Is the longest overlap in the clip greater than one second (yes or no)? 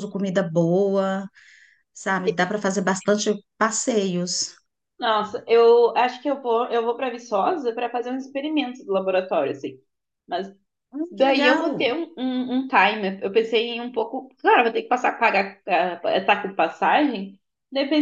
no